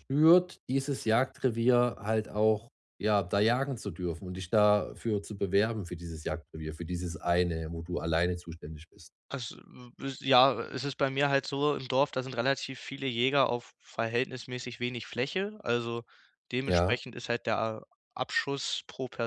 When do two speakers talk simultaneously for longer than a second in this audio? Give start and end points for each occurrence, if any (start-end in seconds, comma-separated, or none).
none